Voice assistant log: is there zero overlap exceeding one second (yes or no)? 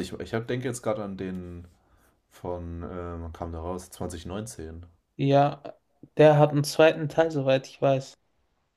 yes